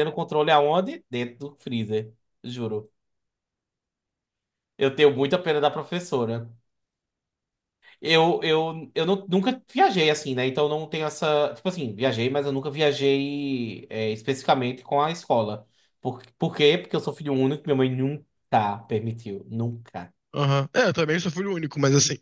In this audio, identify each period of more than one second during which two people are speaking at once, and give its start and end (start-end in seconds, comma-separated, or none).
none